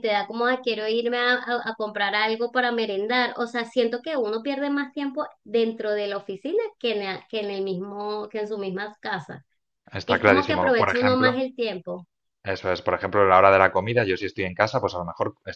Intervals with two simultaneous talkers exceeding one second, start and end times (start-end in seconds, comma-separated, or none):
10.1-11.5